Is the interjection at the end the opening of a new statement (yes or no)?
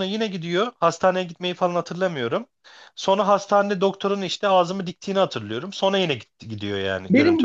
yes